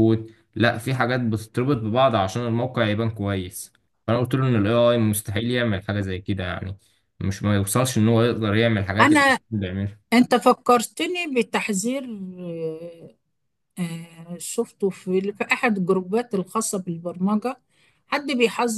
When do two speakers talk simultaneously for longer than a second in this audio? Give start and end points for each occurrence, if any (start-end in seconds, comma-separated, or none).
none